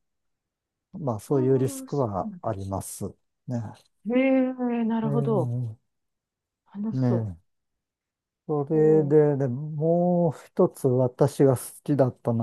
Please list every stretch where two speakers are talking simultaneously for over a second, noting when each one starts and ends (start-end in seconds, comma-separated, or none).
1.3-2.5